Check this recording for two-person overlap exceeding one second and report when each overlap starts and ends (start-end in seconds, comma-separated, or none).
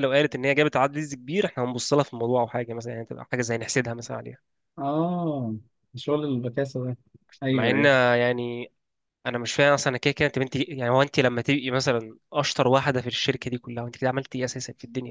none